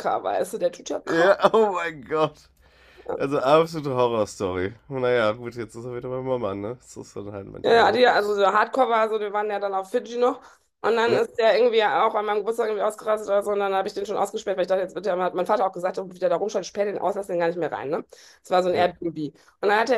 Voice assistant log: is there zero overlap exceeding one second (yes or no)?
yes